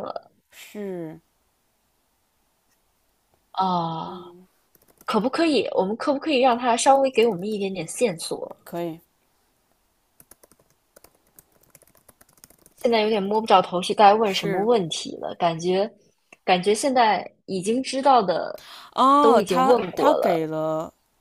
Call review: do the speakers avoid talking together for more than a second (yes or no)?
no